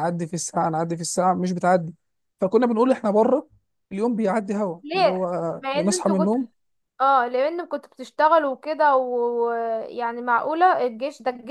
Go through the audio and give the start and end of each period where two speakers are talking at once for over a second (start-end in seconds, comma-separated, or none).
4.8-6.3